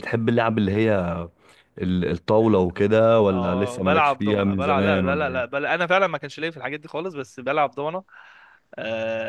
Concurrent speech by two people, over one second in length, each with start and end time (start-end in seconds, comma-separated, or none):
3.3-5.4